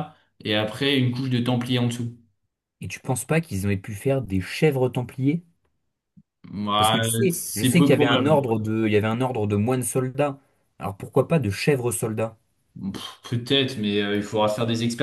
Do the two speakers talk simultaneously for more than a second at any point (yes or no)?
yes